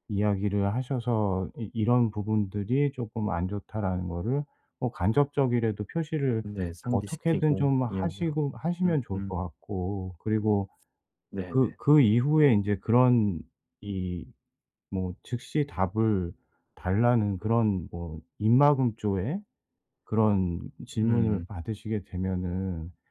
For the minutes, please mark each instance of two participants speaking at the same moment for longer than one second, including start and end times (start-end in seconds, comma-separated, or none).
6.9-9.4